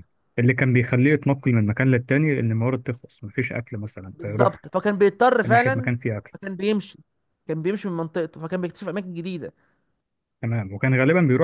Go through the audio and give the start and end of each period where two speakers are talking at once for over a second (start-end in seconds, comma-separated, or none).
none